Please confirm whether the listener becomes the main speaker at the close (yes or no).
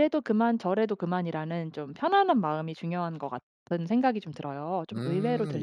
yes